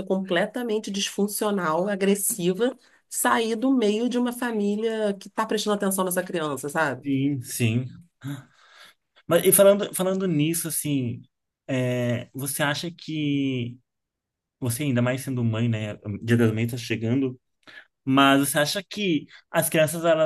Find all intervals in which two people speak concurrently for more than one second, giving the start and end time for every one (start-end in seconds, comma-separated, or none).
none